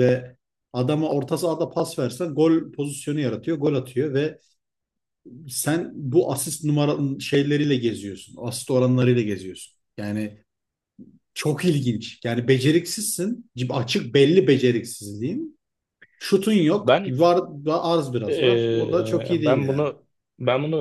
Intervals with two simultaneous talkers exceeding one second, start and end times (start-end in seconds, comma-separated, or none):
18.3-19.9